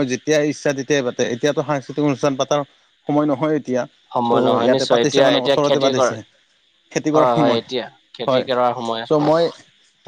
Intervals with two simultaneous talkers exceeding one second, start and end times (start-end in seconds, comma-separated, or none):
4.3-6.2